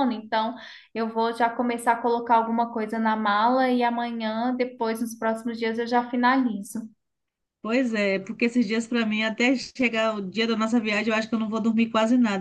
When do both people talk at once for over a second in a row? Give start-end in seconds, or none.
none